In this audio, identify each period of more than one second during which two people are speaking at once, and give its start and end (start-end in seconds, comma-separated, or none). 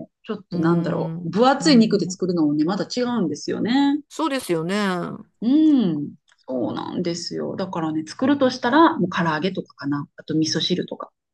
0.5-2.2